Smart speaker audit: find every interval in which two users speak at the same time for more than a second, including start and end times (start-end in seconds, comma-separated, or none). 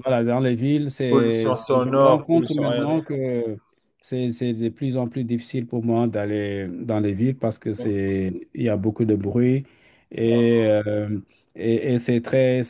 1.1-3.0